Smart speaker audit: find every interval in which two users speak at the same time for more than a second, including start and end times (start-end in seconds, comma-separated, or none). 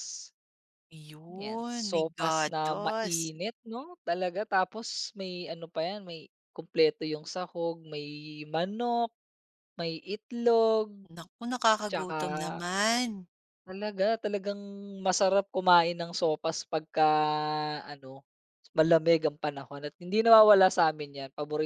1.4-3.3